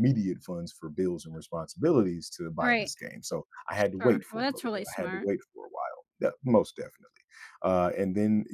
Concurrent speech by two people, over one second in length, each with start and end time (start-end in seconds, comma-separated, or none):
3.7-5.3